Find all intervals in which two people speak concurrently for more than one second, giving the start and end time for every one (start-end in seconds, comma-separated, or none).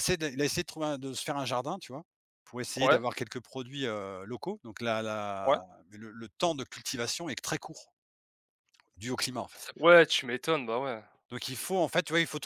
none